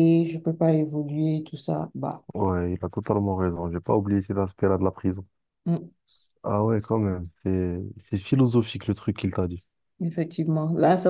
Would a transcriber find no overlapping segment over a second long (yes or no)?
yes